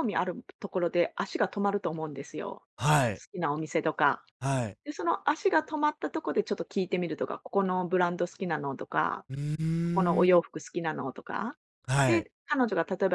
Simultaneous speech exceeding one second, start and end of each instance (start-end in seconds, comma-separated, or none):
none